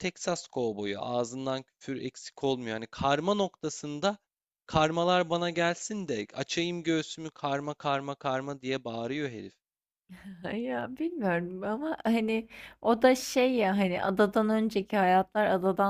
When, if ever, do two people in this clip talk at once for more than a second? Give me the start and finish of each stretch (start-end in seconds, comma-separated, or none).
none